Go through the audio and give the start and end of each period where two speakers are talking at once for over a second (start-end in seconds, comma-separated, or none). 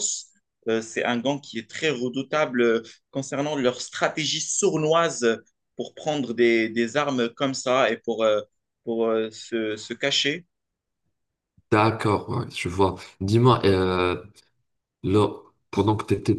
none